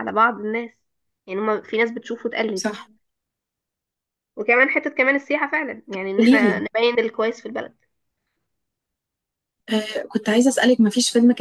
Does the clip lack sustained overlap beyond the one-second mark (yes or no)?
yes